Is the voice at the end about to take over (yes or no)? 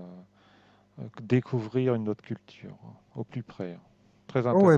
yes